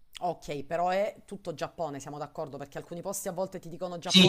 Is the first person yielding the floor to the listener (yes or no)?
yes